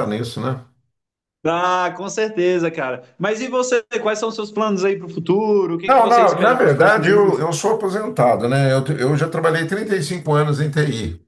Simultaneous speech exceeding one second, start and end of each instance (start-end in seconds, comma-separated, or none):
5.8-7.5